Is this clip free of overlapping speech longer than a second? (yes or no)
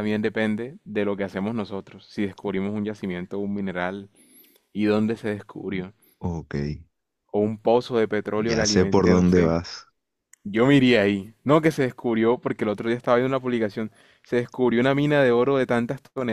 no